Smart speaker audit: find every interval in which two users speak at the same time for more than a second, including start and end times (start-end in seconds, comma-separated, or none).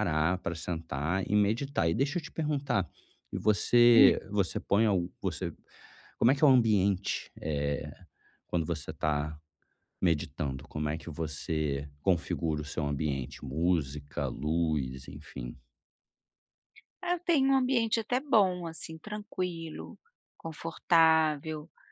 none